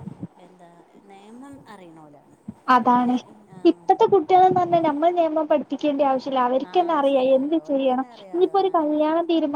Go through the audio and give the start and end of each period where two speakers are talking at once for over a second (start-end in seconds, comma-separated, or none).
6.7-9.0